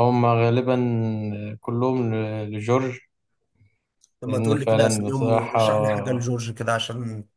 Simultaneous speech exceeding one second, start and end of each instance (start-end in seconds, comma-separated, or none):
4.2-5.6